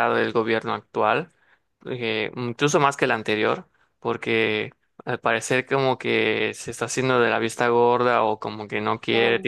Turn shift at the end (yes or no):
no